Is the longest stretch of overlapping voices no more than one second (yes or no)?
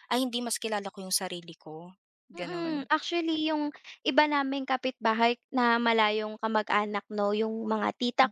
yes